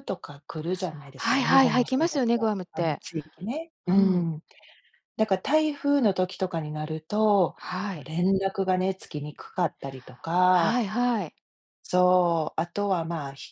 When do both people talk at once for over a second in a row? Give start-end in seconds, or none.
1.2-3.0